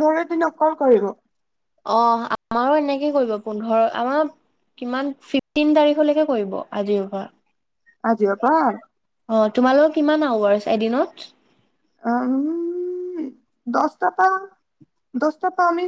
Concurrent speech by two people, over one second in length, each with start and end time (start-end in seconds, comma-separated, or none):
none